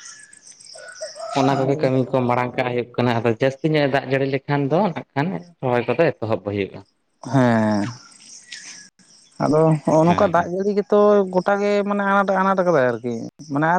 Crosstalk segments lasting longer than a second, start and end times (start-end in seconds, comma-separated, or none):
none